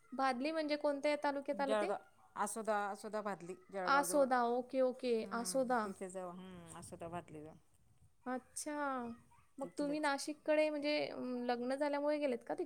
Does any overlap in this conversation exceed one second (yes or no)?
no